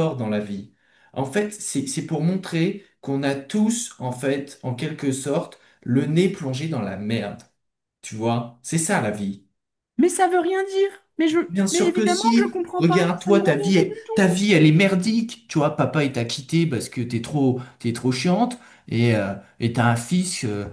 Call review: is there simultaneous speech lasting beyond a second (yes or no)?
yes